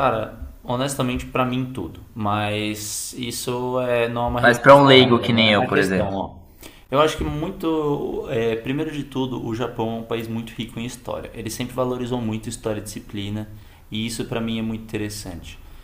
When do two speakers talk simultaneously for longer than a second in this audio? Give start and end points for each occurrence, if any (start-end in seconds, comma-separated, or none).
4.4-6.3